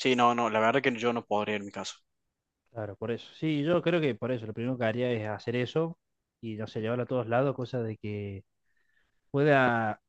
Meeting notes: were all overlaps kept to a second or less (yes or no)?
yes